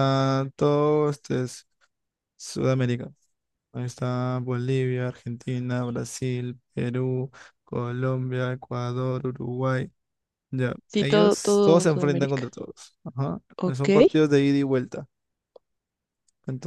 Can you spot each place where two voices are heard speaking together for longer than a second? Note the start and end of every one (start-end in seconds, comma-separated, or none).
10.9-12.5